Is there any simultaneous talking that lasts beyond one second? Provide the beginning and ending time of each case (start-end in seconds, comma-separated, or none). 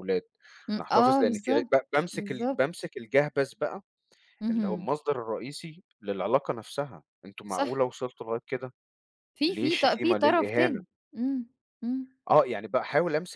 0.8-2.9, 9.5-10.8